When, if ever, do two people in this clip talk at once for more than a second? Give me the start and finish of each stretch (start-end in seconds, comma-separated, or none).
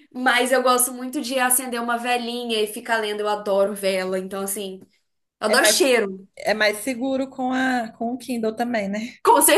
none